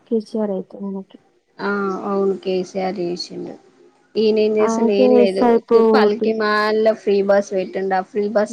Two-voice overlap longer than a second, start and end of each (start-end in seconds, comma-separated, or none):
4.7-6.3